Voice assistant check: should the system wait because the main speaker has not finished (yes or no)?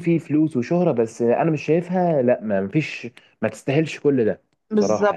no